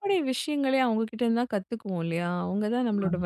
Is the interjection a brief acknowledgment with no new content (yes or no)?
yes